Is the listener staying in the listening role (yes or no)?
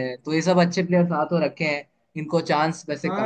no